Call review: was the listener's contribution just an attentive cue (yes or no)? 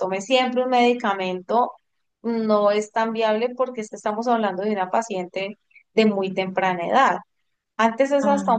yes